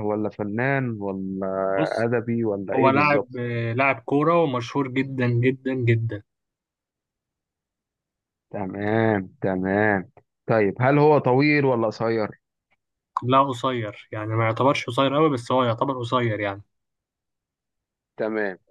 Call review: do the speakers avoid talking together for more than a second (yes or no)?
yes